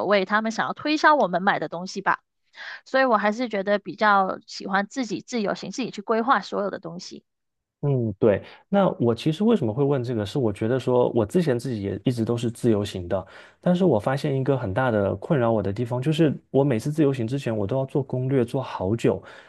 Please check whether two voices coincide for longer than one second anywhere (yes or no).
no